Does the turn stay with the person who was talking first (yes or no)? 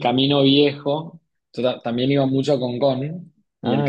yes